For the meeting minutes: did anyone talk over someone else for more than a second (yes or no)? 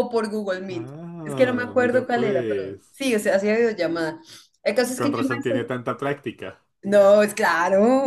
yes